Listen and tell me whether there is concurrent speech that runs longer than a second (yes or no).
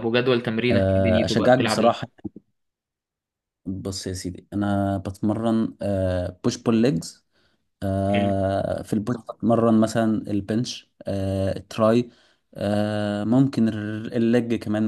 yes